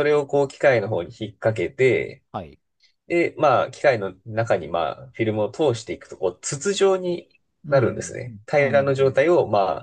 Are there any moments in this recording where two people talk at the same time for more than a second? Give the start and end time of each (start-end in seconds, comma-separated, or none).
7.7-9.2